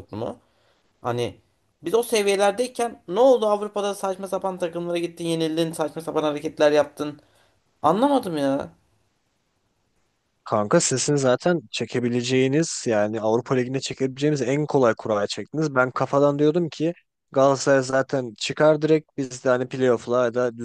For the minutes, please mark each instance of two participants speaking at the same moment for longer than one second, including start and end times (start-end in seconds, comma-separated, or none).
none